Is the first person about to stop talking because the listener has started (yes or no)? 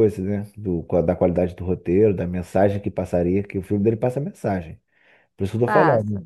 no